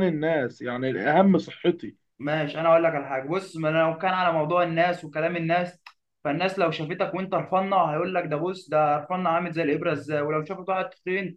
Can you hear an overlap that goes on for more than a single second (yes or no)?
no